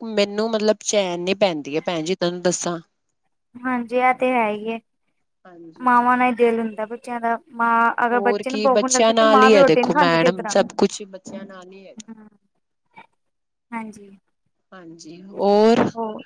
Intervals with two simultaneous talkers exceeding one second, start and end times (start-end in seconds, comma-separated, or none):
8.1-10.5